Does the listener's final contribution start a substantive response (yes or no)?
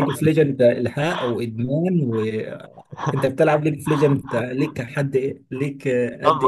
yes